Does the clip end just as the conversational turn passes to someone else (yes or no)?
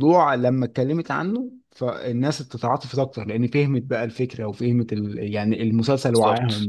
no